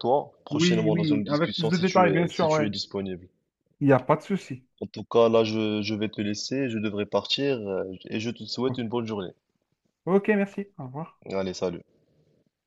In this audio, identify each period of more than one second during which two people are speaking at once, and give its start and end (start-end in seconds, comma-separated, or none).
0.5-2.7